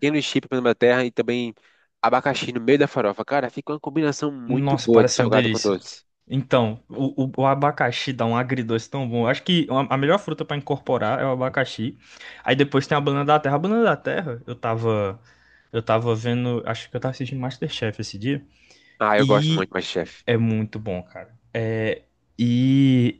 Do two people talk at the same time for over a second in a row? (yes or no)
yes